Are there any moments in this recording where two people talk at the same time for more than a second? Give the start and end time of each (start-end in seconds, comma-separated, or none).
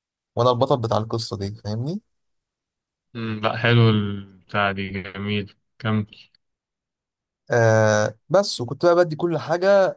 none